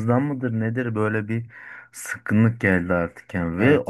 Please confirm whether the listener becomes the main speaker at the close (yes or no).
no